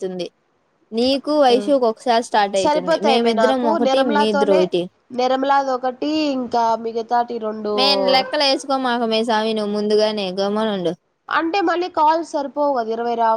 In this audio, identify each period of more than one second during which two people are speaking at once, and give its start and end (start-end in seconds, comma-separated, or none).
2.6-4.6